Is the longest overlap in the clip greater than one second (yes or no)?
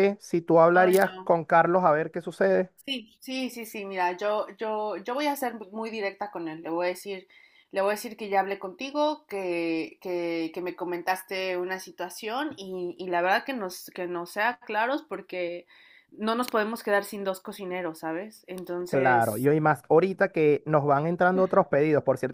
no